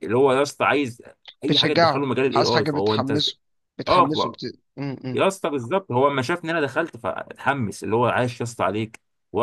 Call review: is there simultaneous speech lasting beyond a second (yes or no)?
yes